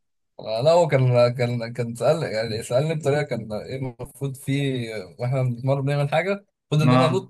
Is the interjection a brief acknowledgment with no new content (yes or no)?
yes